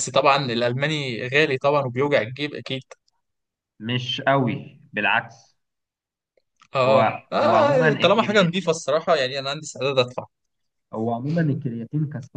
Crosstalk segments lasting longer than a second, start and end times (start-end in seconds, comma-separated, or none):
6.8-8.7